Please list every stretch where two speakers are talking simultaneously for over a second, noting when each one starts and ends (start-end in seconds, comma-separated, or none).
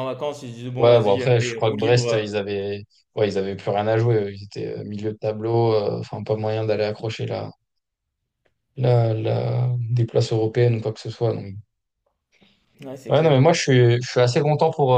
0.8-2.3